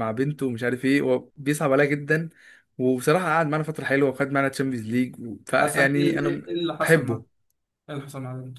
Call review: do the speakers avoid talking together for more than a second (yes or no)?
no